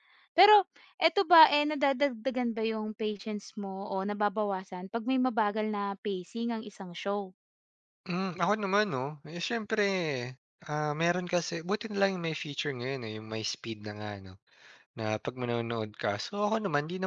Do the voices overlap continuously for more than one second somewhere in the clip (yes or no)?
no